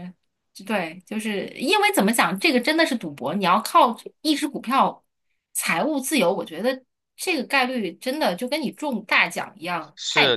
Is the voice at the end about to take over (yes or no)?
yes